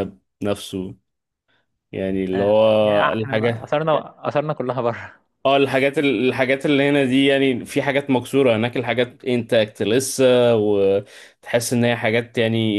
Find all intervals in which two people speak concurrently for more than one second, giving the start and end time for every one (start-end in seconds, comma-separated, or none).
2.3-3.8